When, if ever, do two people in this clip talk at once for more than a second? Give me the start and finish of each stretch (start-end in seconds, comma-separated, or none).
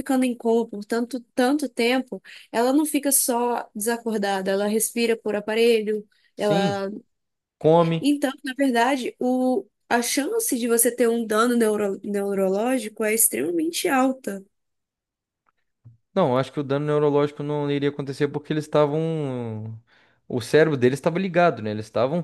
none